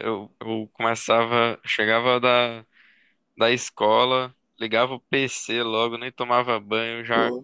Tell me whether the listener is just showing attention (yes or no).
yes